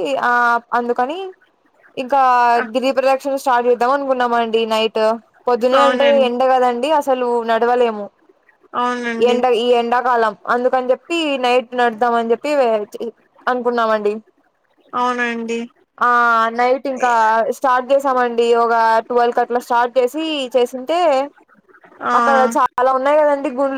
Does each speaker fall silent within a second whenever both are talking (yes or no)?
yes